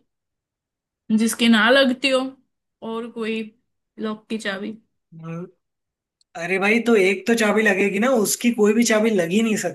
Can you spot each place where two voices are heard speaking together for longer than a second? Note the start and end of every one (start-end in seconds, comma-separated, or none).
none